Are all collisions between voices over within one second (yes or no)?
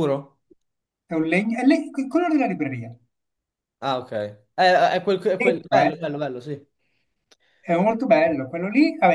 yes